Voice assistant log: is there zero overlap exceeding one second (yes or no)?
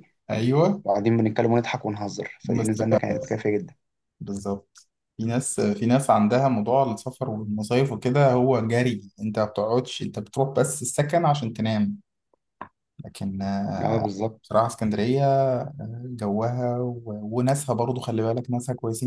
yes